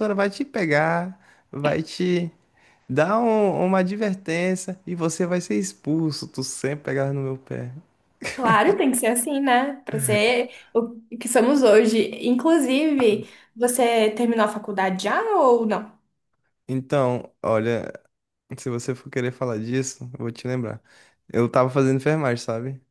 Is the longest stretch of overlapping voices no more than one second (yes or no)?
yes